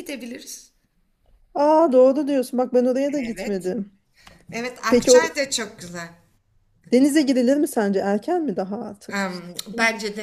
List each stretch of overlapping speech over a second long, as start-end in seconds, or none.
none